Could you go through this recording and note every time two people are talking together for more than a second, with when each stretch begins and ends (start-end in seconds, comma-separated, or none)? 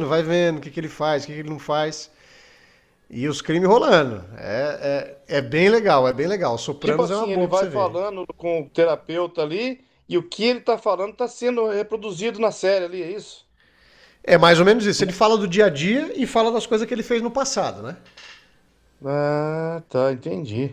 6.8-8.0